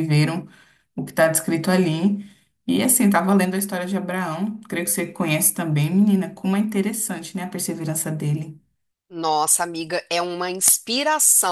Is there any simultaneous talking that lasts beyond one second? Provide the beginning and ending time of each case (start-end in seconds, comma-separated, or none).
none